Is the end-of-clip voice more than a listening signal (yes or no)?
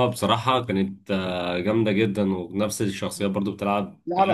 yes